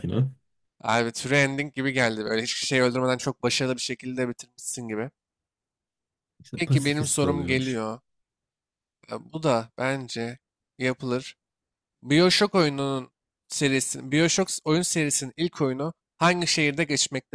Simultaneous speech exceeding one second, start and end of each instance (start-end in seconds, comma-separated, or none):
6.5-7.8